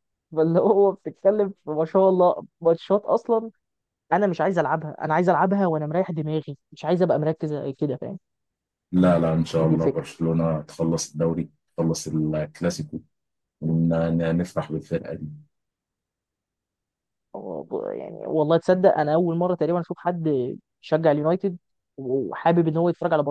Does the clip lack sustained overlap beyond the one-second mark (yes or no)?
yes